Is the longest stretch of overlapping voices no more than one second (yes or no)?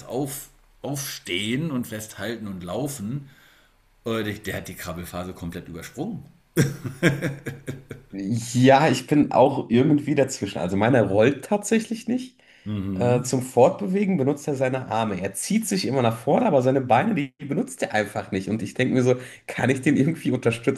yes